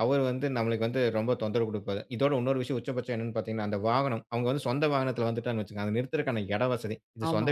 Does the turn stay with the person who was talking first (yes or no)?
yes